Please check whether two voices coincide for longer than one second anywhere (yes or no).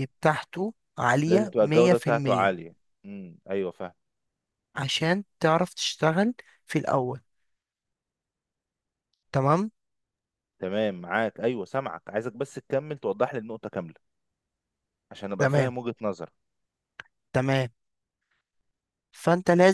yes